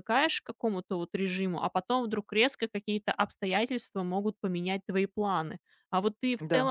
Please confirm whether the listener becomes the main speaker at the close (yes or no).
no